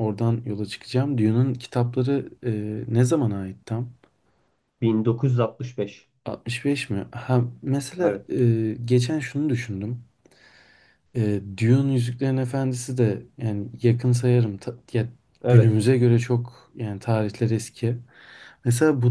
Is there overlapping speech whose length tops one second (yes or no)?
no